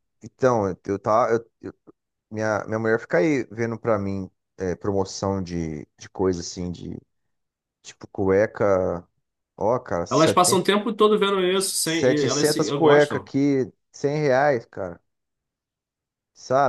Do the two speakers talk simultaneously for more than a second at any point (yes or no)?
yes